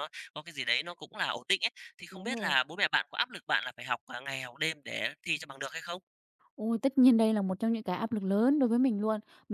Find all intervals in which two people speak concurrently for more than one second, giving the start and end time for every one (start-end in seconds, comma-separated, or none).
none